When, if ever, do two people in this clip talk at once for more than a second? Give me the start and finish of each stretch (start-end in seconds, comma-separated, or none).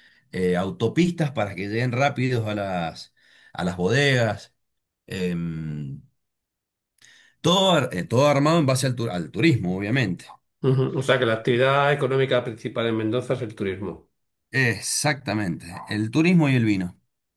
none